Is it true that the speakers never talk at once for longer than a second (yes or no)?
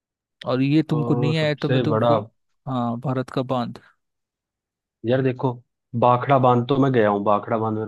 no